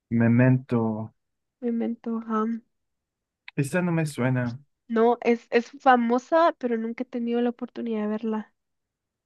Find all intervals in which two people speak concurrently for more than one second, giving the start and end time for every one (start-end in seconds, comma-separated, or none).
none